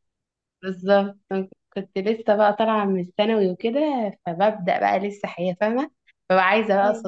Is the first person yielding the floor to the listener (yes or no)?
no